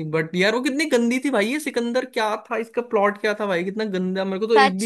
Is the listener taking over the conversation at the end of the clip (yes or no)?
yes